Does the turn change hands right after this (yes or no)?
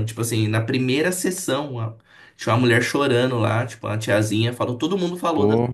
no